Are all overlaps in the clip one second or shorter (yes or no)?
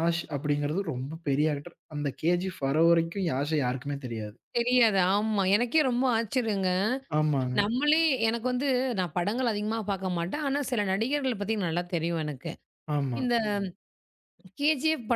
yes